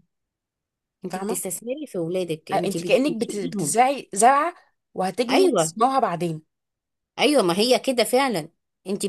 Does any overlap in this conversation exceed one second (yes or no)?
yes